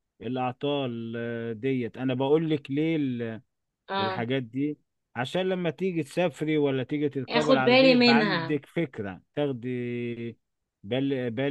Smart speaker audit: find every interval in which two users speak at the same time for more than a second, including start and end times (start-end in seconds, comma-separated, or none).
7.3-8.6